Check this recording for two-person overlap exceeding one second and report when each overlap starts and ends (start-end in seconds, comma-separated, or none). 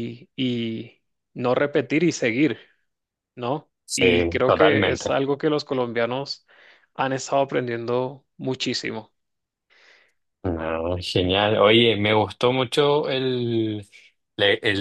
3.9-5.2